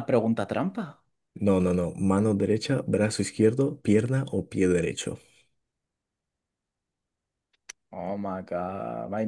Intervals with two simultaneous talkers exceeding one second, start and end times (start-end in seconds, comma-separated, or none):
none